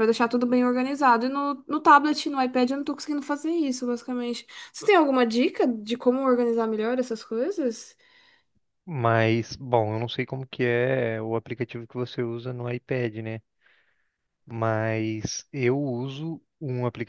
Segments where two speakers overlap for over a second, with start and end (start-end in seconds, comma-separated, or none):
none